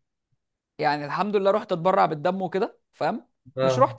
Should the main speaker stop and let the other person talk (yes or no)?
no